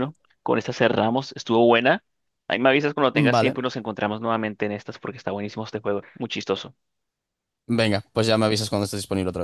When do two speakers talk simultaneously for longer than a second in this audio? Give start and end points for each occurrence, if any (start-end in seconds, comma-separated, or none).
none